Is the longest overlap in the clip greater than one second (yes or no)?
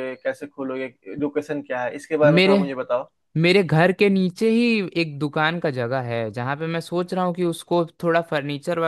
no